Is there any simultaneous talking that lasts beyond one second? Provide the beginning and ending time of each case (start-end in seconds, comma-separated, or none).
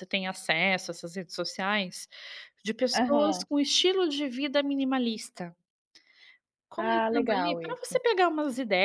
6.8-8.0